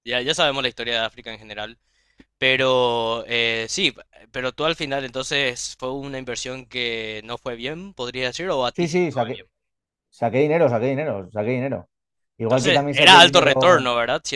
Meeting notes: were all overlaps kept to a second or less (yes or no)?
no